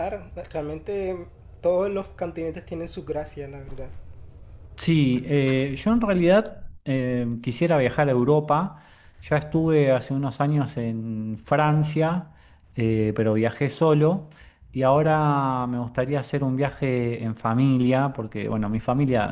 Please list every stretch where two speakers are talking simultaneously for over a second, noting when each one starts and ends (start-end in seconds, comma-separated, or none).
none